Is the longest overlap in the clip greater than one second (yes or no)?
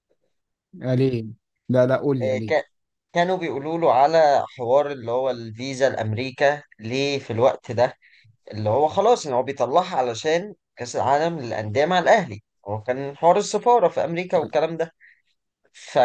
no